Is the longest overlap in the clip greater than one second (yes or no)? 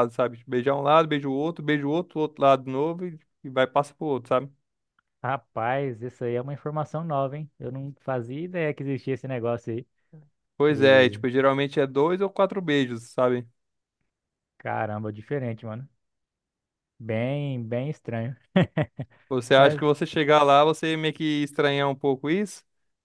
no